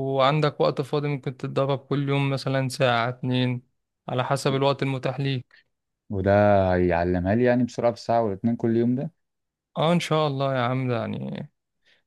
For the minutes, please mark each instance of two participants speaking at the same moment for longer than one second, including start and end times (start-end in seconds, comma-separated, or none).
none